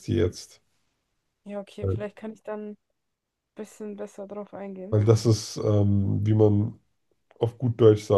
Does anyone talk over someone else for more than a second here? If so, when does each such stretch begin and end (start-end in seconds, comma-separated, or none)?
none